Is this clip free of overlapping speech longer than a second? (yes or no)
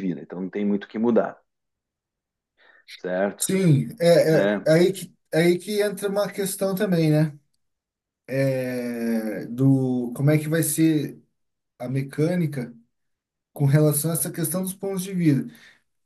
yes